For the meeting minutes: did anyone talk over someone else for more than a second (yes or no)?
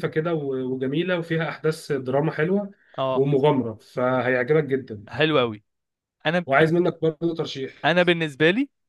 no